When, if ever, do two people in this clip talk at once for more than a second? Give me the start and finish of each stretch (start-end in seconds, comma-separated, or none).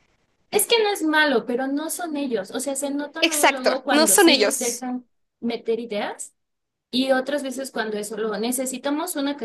3.2-4.8